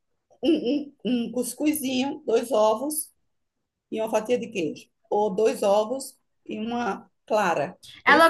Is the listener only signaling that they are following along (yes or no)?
no